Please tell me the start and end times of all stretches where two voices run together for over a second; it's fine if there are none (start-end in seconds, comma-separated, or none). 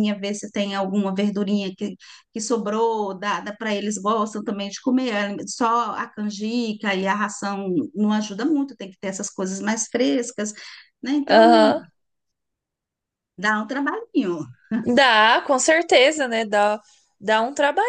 none